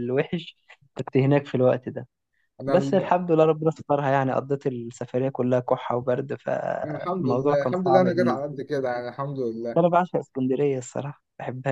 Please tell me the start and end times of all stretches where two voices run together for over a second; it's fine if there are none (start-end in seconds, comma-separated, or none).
6.8-8.6